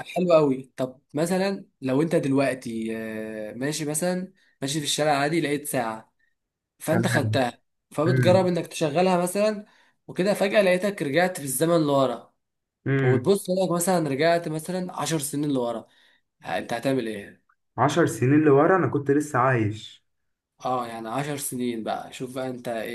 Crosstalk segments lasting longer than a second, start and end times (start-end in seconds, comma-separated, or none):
none